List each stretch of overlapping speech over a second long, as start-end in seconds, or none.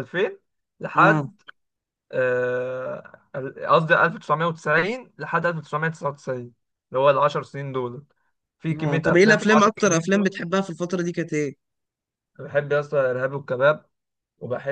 8.8-10.4